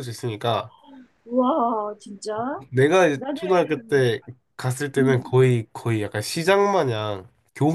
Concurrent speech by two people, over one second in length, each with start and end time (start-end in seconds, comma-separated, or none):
none